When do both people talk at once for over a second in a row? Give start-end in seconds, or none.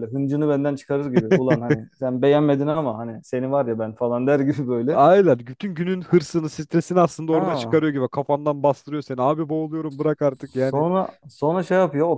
none